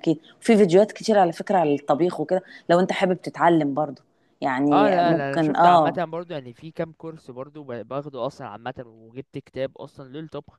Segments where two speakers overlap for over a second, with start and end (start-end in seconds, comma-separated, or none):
4.7-6.0